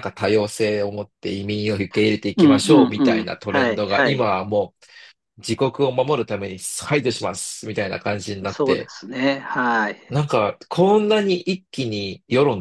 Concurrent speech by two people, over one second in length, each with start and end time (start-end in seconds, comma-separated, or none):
2.4-4.3